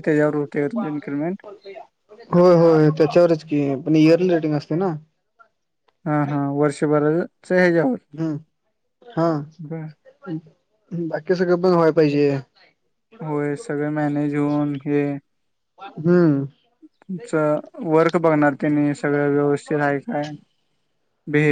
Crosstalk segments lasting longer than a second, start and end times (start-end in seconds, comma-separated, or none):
none